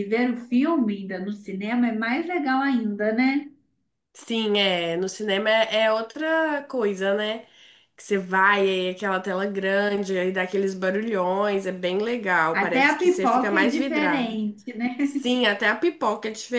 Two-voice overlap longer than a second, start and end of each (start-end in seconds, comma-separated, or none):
12.5-14.4